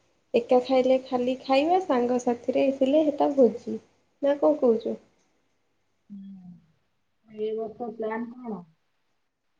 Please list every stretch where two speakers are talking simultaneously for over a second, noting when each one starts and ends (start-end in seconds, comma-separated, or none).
none